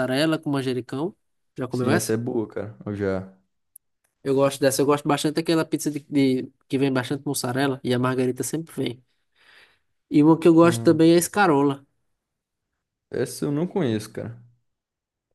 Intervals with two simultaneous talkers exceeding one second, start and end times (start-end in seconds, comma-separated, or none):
none